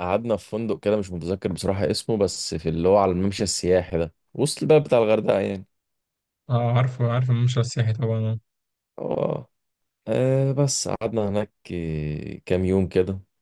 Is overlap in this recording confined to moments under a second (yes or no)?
yes